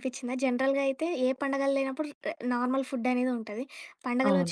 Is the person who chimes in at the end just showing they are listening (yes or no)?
yes